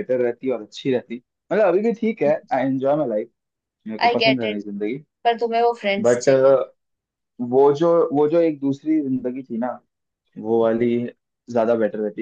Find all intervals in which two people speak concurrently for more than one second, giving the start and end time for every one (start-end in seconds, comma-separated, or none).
none